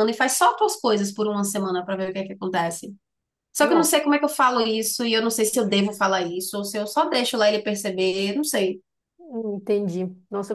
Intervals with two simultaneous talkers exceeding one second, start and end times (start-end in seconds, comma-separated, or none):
none